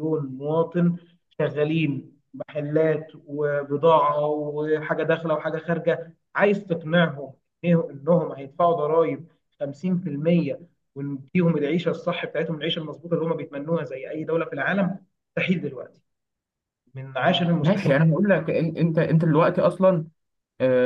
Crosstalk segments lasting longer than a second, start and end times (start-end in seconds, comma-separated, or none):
none